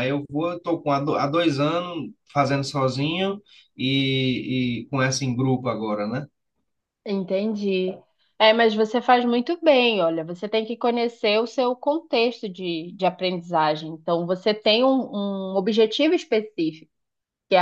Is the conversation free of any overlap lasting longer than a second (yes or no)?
yes